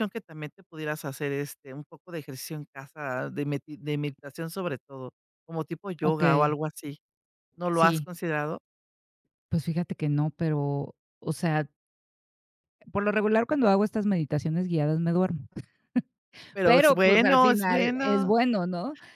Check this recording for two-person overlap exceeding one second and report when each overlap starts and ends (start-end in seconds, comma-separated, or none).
16.6-18.3